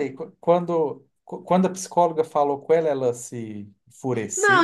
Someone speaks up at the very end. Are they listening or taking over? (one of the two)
taking over